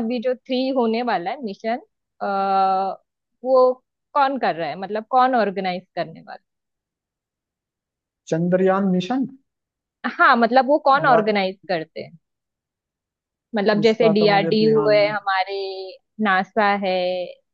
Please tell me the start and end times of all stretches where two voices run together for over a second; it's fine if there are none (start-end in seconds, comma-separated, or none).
13.8-15.1